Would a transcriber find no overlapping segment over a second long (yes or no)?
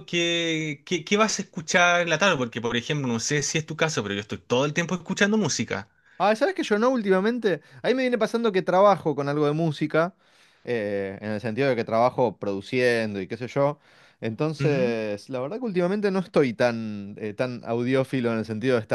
yes